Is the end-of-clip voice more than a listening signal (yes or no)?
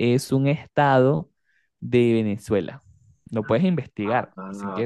yes